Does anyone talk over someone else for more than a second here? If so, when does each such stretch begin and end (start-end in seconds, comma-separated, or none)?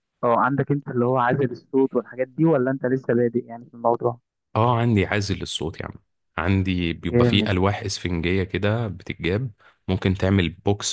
none